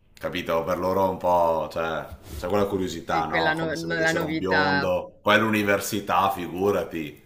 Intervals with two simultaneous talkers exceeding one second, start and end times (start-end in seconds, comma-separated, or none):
3.1-4.9